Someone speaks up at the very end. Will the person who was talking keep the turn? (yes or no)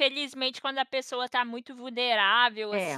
yes